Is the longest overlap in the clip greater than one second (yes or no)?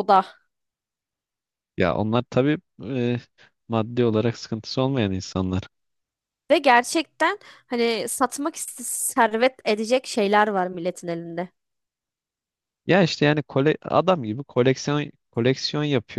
no